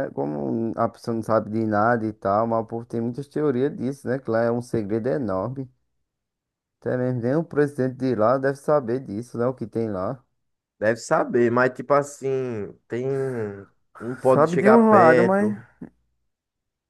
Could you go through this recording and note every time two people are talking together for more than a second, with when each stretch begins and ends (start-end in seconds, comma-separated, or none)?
14.3-15.5